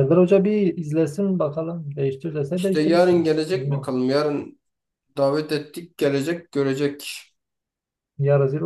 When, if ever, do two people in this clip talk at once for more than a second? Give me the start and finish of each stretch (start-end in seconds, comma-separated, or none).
2.5-3.9